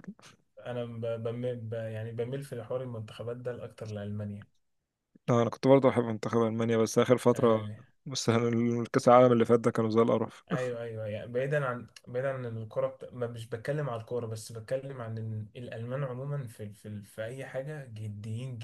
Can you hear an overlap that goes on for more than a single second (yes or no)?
no